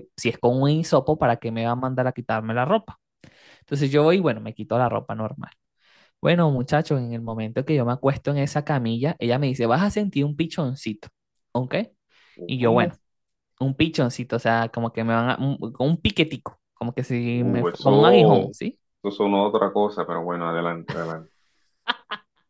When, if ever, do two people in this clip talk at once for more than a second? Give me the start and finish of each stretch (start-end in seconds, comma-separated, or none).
17.3-18.5